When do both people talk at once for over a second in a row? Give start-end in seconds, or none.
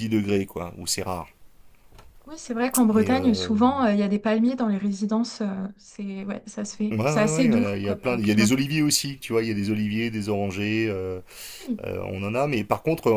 6.9-8.5